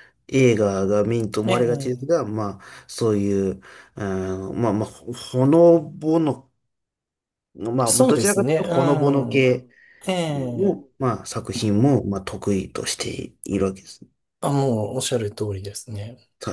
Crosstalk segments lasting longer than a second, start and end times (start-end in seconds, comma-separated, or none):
7.9-9.5